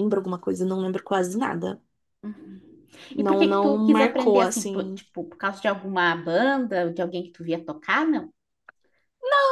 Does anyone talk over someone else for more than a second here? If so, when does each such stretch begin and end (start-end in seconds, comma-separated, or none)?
3.2-5.0